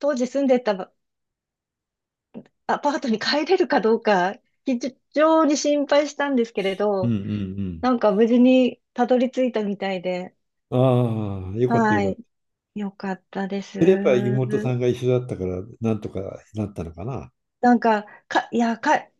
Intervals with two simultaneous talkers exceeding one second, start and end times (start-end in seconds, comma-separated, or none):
none